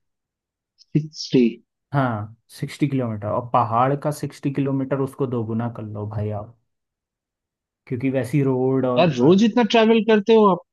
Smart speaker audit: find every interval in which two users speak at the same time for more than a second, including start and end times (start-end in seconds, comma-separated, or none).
none